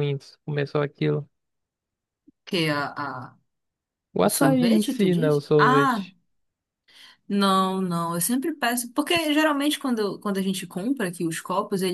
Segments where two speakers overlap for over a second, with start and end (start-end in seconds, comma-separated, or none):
4.2-6.1